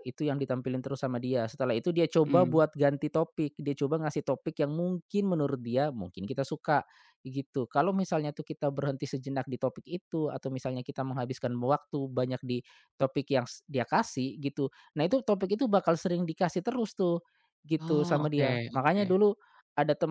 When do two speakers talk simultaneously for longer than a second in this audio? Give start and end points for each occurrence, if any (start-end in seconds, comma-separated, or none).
17.8-19.0